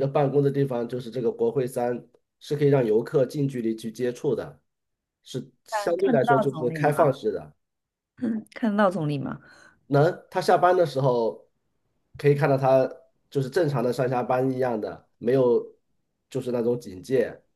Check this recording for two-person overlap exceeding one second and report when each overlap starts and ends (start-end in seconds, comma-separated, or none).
5.7-7.2